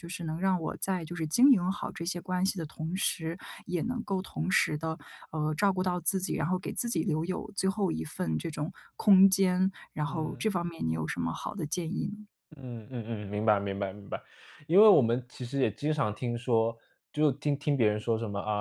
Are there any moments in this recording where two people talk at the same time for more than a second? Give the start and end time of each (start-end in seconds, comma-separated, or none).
none